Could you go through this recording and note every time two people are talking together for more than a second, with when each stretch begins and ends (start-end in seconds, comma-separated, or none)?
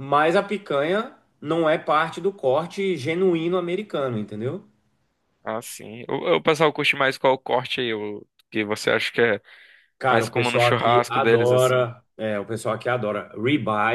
10.1-11.9